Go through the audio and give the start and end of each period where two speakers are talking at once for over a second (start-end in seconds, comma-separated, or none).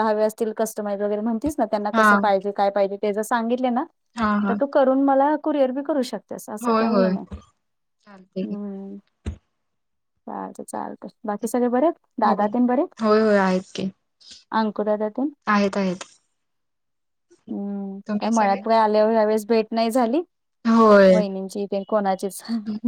none